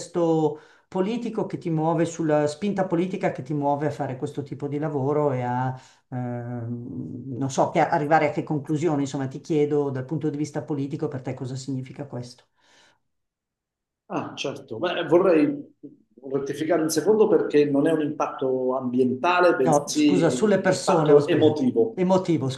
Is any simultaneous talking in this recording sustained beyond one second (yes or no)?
yes